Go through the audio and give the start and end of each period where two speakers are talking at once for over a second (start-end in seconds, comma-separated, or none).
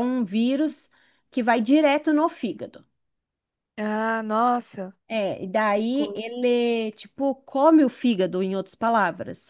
none